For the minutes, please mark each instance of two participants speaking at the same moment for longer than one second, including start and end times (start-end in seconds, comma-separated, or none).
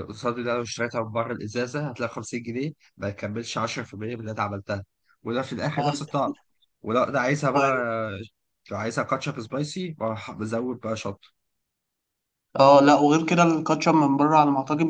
none